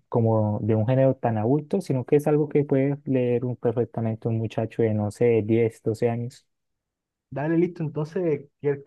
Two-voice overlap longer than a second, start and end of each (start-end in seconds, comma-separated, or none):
none